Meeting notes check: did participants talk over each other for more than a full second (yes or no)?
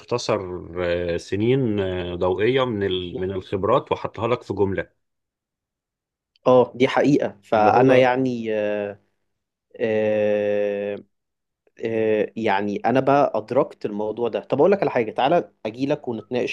no